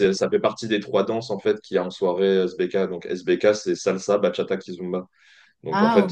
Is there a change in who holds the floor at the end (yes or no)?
no